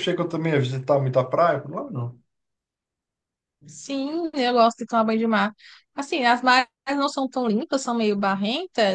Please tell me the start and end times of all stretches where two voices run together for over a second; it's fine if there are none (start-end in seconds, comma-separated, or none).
none